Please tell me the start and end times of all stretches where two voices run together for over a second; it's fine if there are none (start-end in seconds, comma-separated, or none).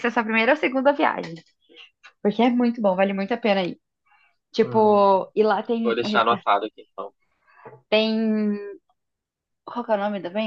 none